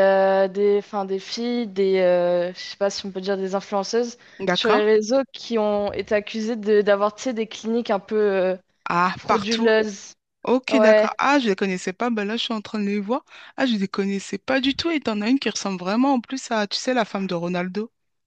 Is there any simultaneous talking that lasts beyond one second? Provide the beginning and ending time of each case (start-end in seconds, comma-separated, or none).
none